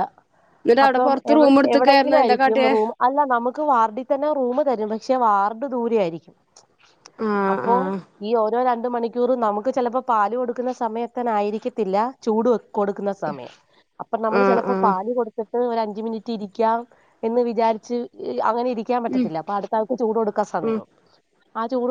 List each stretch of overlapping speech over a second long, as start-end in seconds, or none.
0.8-2.7